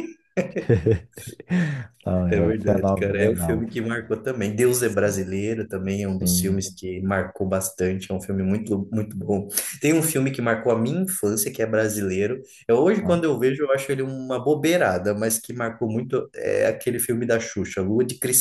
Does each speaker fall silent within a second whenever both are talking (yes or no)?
no